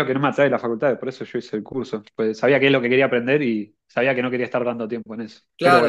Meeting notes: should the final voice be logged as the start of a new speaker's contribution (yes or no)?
yes